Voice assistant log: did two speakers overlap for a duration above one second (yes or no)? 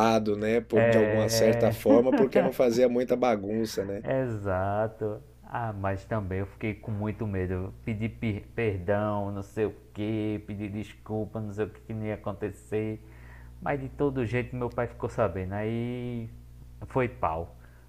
yes